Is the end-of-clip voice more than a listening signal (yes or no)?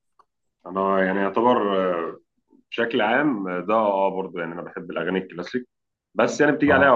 no